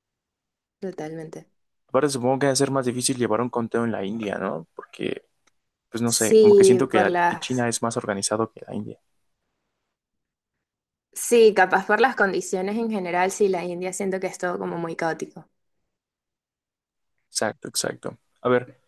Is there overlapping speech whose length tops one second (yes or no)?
yes